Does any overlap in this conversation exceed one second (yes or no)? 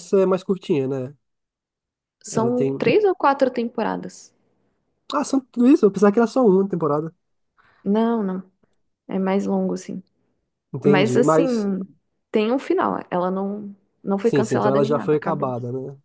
yes